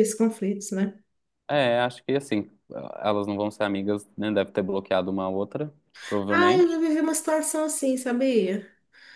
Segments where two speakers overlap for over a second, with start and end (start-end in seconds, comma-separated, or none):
none